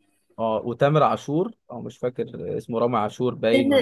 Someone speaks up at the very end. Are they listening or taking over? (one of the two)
taking over